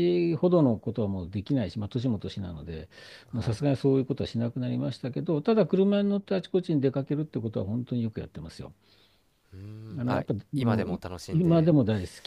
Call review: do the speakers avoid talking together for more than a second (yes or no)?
no